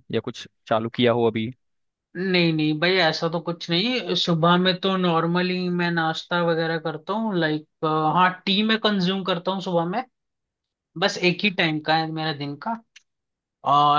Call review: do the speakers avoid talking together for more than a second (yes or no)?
yes